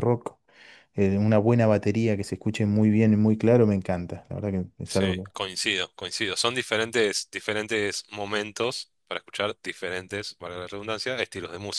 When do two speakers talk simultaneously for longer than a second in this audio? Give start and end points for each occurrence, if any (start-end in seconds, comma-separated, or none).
none